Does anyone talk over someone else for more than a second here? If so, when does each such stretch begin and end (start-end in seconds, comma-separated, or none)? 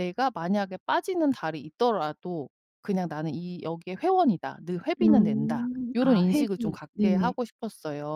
5.0-7.3